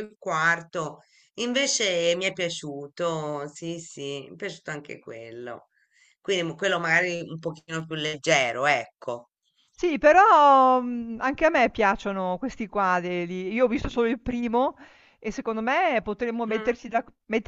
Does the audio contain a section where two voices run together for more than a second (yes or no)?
no